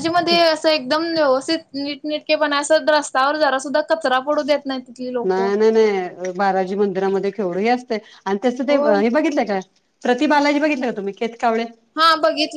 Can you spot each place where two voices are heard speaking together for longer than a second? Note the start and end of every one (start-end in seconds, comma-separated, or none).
none